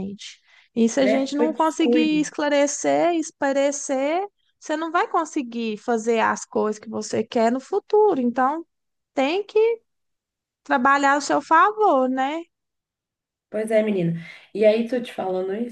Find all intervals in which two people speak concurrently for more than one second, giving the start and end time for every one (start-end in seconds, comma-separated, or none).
1.0-2.2